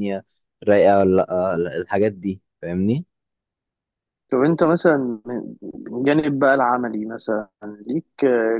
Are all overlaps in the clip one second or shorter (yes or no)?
yes